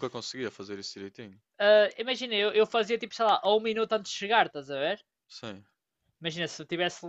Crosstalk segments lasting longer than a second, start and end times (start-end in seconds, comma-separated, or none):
none